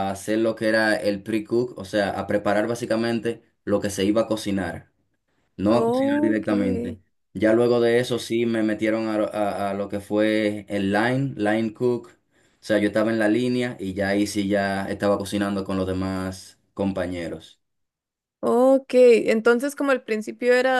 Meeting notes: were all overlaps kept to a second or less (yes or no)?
no